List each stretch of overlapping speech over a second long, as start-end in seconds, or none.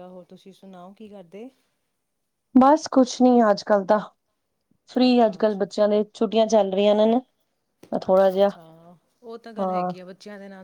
none